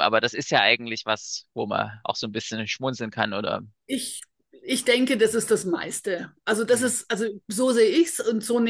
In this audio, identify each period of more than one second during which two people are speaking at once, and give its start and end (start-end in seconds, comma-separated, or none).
none